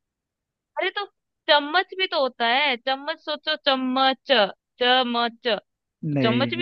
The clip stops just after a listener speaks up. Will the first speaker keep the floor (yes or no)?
yes